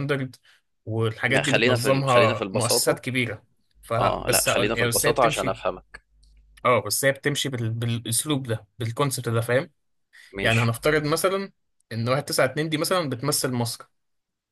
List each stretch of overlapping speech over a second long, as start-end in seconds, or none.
1.3-3.0, 4.0-5.6